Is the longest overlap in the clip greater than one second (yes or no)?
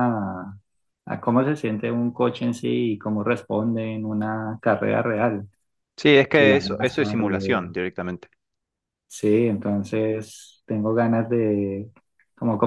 yes